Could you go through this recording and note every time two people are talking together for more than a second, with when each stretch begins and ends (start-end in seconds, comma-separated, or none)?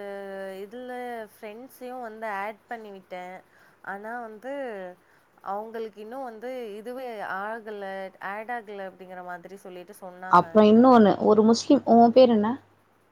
none